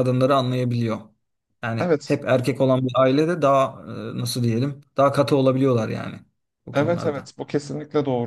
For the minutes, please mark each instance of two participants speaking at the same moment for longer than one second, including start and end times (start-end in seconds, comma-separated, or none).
none